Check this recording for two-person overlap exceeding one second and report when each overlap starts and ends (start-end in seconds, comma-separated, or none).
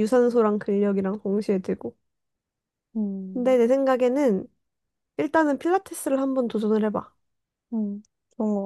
none